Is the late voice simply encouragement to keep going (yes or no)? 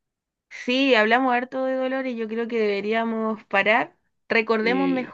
yes